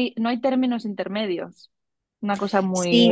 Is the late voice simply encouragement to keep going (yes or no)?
no